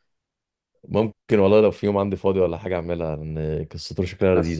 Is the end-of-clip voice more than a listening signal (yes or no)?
no